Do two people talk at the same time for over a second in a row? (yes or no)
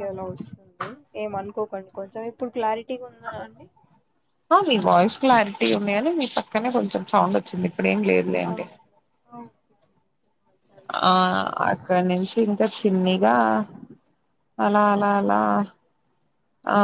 no